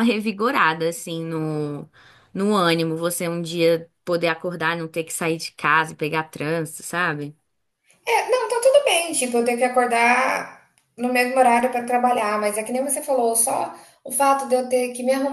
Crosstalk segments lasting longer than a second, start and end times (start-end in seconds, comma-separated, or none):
none